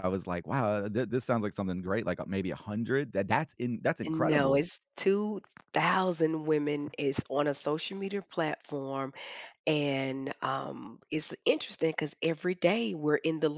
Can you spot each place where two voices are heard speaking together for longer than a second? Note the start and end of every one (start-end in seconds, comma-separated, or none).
none